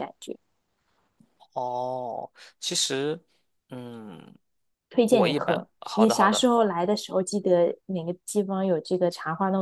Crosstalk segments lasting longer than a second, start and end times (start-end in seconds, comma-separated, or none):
5.1-6.6